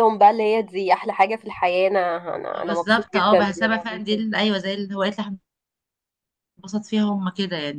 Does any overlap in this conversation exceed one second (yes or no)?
yes